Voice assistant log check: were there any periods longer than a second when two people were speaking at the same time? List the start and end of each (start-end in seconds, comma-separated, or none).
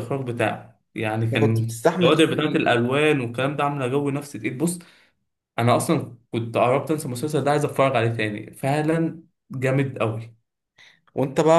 1.2-2.6